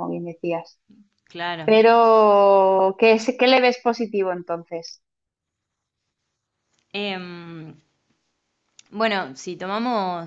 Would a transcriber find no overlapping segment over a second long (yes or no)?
yes